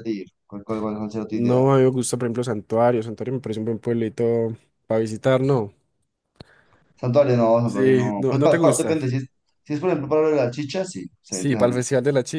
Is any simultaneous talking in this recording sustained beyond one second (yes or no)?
yes